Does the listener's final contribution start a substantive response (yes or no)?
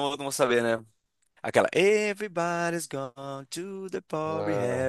no